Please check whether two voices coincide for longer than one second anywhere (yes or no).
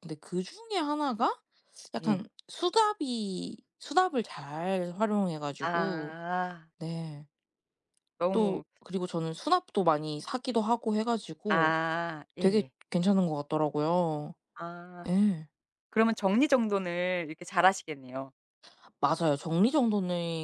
no